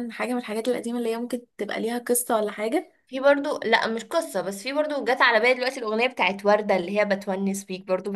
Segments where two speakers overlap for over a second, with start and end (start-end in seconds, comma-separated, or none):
none